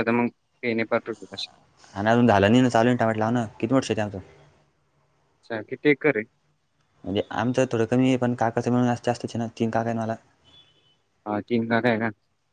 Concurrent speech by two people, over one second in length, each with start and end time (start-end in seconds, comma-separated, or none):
none